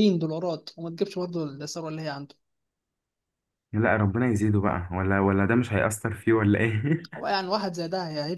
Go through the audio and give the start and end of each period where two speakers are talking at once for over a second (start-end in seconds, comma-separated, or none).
none